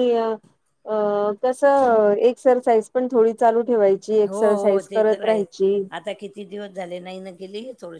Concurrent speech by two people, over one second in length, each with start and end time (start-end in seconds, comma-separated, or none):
4.3-5.7